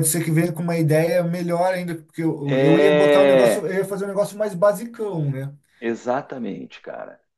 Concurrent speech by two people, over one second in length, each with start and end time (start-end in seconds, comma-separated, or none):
2.4-3.7